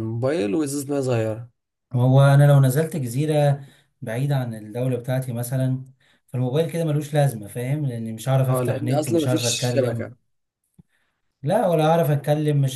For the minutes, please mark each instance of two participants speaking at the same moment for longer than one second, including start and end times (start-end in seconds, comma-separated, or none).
8.5-10.1